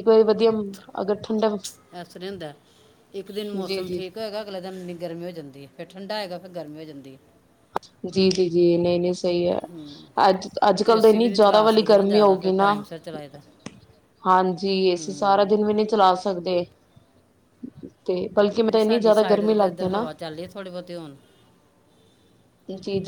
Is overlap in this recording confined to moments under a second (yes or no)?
no